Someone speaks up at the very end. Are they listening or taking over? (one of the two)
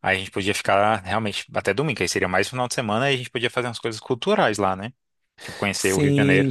taking over